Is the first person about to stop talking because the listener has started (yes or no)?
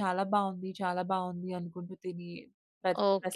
yes